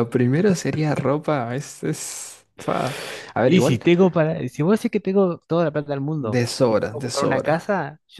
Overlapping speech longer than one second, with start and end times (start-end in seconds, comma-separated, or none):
6.1-7.6